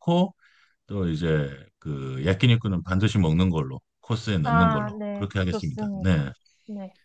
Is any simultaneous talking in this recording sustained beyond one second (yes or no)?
yes